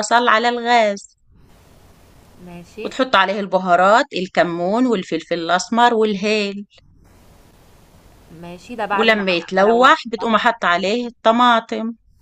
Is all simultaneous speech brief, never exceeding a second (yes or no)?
no